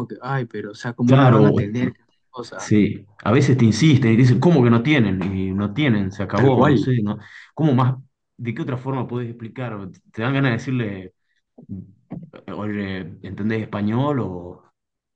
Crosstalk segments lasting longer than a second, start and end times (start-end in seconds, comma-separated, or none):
none